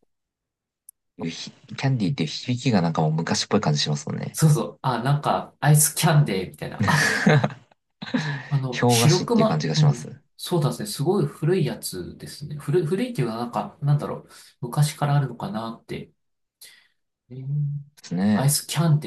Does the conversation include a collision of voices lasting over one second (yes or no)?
yes